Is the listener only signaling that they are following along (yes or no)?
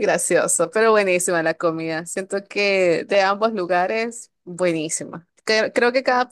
yes